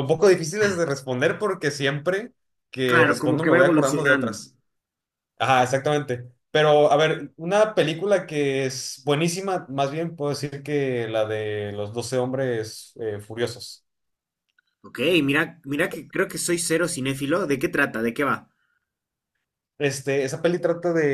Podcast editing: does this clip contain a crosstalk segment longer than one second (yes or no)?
yes